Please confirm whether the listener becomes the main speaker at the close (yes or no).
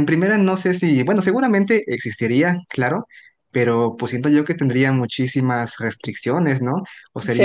yes